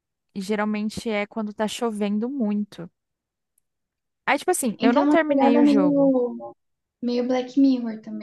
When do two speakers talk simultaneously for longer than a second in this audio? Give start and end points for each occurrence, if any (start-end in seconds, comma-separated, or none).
4.8-6.1